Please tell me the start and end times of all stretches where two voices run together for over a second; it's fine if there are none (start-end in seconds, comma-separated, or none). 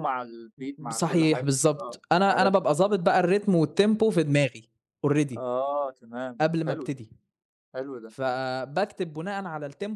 0.9-2.7